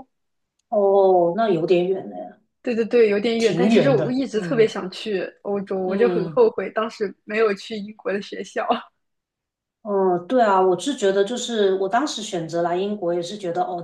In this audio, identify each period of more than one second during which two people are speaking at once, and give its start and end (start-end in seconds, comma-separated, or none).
3.4-4.7